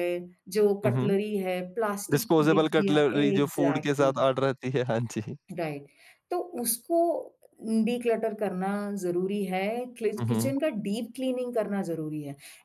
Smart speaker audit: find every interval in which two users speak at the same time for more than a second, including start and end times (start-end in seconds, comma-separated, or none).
2.1-4.1